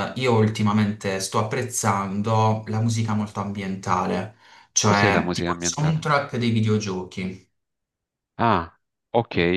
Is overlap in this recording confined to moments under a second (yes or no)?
no